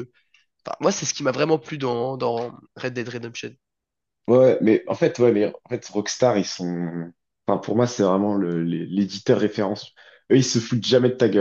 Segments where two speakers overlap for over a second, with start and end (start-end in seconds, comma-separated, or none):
none